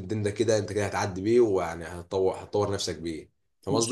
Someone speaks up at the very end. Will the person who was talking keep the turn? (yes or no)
no